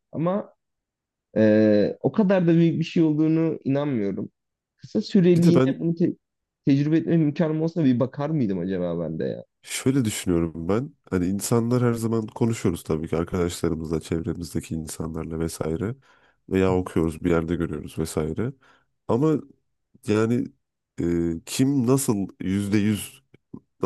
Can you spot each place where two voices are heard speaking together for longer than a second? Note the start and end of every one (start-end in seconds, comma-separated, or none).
none